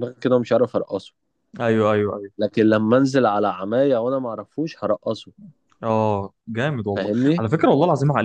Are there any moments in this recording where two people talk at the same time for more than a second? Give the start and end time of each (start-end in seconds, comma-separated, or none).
none